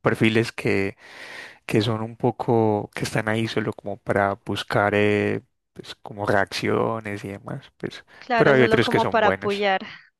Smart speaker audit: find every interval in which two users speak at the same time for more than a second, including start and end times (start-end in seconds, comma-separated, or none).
8.2-9.7